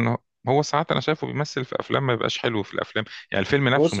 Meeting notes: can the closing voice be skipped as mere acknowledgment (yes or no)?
no